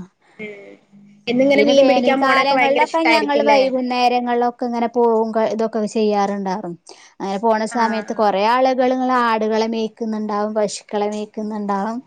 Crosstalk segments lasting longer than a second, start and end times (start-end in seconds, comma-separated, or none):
1.6-3.6